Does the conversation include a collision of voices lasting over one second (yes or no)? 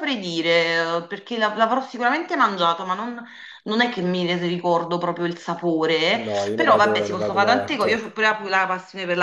yes